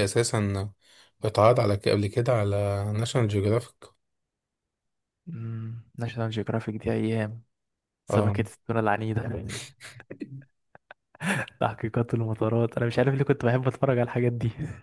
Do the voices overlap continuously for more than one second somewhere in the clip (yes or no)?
no